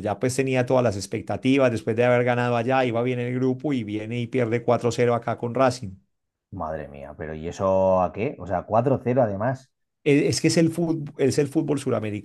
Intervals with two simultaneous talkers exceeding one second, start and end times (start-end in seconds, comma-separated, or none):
none